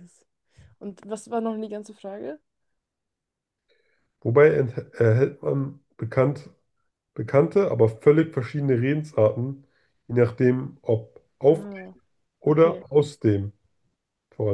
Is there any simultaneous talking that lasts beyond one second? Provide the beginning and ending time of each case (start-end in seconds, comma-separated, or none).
none